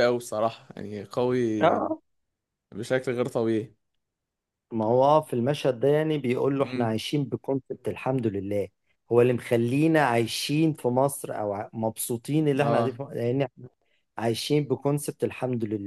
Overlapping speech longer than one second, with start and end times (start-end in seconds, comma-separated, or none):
none